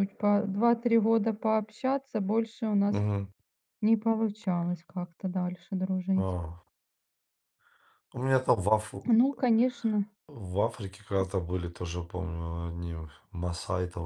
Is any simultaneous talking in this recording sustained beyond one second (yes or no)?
no